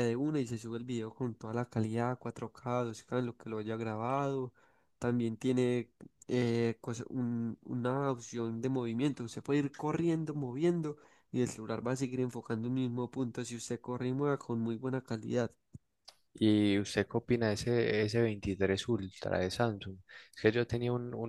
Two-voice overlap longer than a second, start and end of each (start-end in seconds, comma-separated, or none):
none